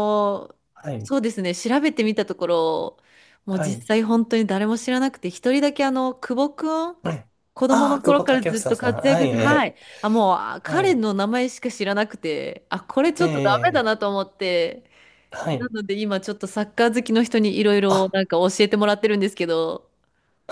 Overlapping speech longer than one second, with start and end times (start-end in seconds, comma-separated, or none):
7.7-9.7